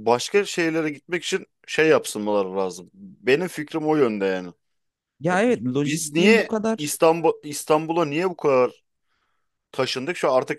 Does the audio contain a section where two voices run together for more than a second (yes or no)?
yes